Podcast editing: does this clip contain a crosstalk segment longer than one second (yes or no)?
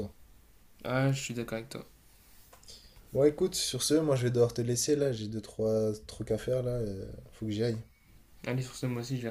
no